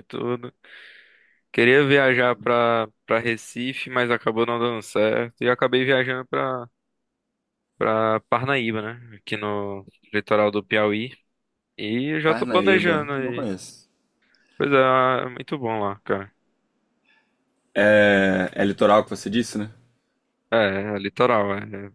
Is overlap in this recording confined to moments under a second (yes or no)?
no